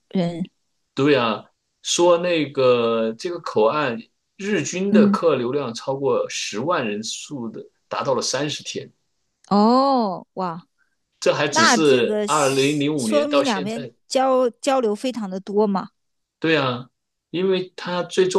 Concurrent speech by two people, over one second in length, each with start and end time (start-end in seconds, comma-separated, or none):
11.5-13.9